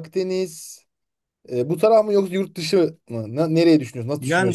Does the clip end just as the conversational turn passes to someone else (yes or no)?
yes